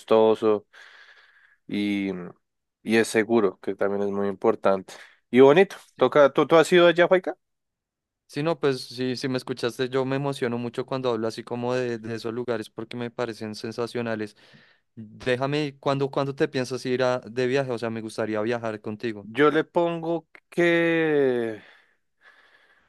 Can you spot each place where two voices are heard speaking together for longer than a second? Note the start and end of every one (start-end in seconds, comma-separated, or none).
none